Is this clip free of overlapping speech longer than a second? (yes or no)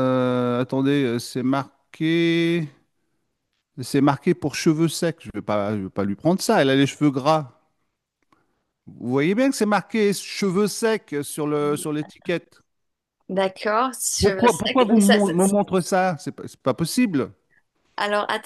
no